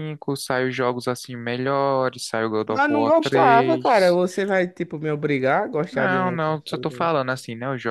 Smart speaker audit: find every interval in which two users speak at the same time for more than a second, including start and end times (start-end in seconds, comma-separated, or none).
2.6-4.2, 5.9-7.1